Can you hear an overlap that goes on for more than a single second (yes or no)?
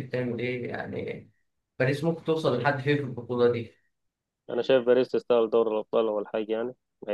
no